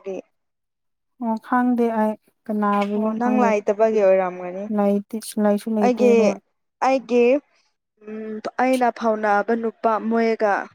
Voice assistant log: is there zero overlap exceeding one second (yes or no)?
yes